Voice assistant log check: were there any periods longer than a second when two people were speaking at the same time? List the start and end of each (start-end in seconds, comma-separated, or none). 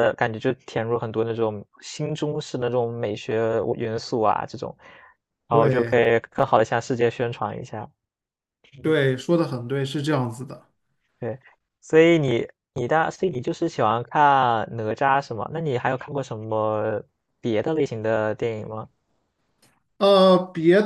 none